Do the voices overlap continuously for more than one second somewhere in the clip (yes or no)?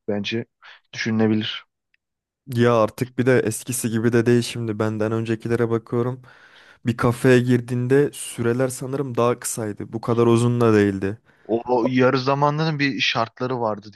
no